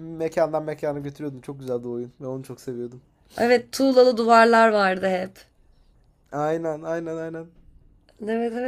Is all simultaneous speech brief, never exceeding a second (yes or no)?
yes